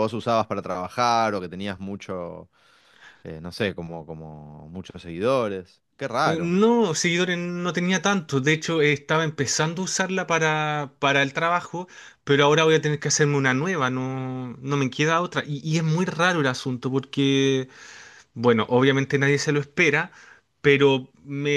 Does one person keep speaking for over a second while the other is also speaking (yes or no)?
no